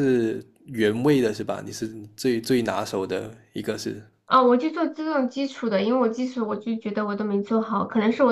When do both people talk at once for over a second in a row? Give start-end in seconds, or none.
none